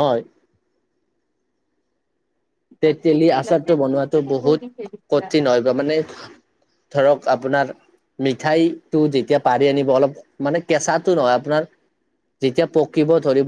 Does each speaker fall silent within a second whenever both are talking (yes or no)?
no